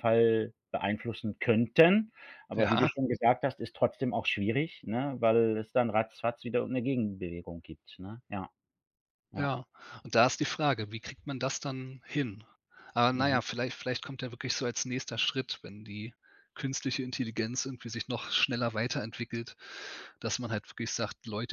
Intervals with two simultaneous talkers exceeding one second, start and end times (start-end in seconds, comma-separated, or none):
none